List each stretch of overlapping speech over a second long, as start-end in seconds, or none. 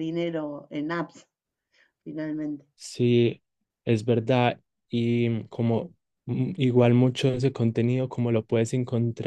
none